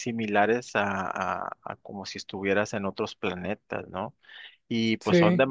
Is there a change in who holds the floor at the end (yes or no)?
no